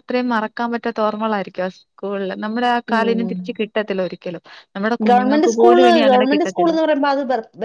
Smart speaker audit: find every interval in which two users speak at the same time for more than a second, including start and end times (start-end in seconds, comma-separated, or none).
5.1-6.7